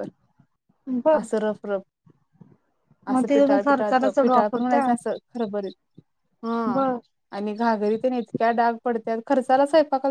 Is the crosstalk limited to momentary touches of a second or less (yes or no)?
no